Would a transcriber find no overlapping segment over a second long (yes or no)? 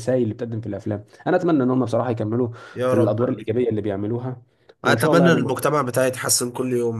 yes